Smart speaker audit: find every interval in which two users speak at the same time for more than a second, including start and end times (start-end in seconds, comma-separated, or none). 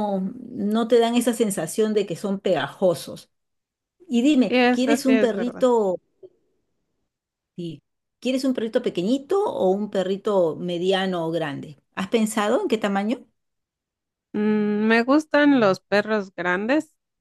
4.5-5.7